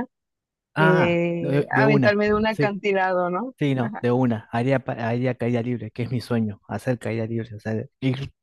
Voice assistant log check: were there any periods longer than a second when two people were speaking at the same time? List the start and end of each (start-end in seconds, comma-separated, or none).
0.8-2.7